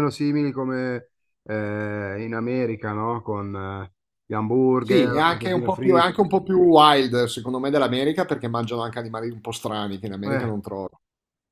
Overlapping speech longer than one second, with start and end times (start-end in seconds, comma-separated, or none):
4.8-6.2